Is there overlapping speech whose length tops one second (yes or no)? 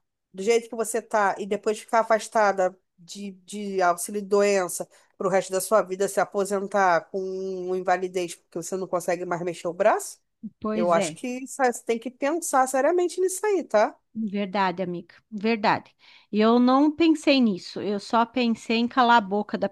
no